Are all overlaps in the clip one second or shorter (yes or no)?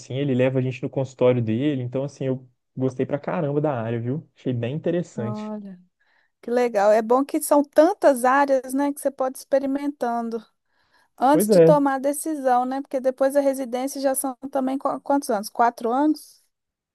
yes